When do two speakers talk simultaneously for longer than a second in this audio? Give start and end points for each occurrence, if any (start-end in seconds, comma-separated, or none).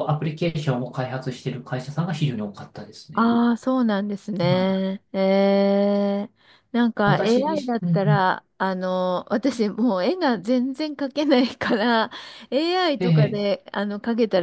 7.0-8.2